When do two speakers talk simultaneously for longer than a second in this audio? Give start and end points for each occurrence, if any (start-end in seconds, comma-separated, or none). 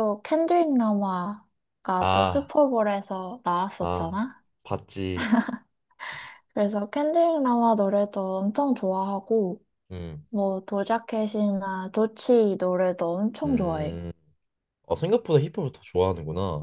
none